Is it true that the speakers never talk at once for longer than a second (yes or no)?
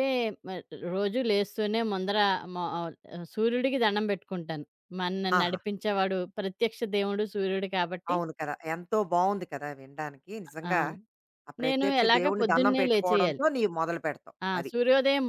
no